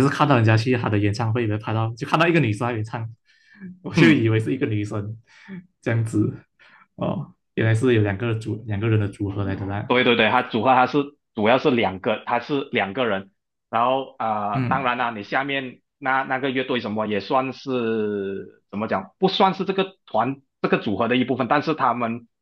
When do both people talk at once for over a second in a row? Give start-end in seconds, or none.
none